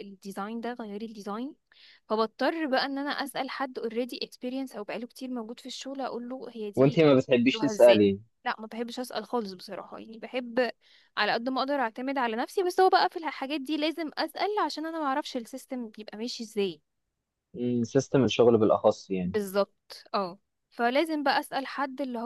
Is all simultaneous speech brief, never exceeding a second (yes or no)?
no